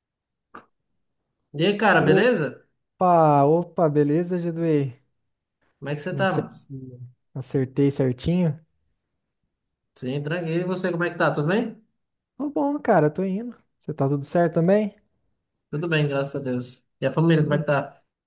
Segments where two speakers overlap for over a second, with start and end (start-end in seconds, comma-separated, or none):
none